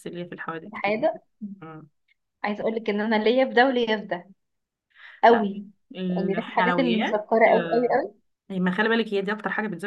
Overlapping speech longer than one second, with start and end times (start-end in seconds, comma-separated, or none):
6.1-8.0